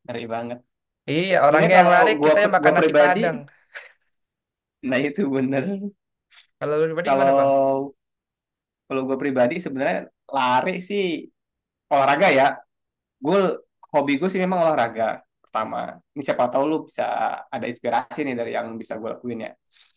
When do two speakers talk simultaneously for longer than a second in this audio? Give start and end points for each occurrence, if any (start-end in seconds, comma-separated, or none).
1.5-3.2